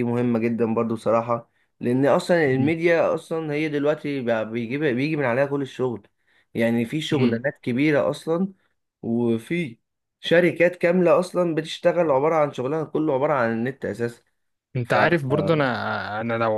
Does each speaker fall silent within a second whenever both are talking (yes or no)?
yes